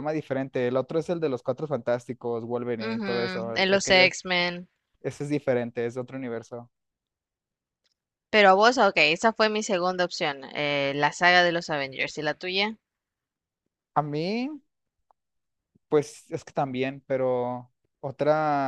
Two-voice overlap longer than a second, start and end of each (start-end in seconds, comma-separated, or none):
2.8-4.1